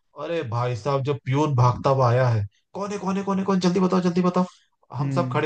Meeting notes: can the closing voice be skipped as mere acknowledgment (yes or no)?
yes